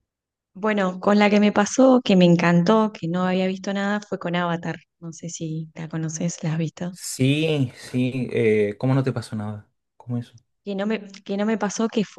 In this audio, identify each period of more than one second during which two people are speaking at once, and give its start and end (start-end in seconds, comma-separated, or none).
none